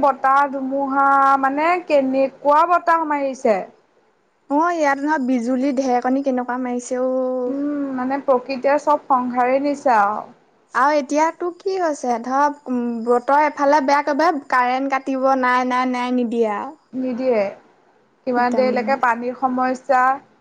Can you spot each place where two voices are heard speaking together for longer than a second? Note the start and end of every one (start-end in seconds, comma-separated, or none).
none